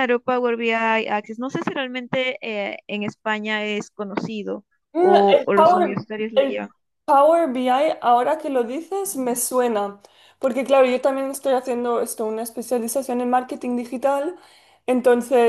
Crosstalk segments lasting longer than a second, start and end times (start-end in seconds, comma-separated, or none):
4.9-6.7